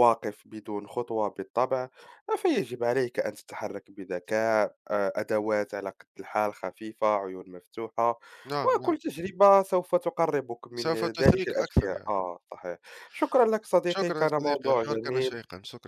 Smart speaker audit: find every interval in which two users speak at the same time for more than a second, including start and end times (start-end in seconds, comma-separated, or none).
10.8-12.1, 13.9-15.4